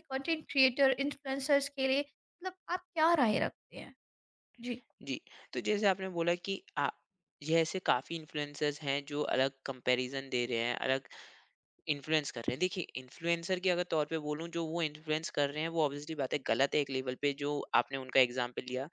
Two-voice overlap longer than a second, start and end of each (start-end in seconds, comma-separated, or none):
none